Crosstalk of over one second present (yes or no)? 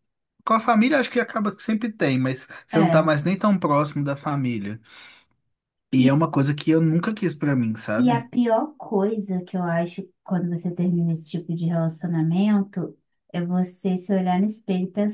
no